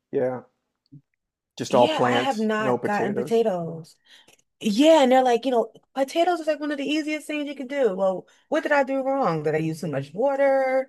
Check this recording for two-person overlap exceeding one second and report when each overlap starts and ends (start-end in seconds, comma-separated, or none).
1.7-3.4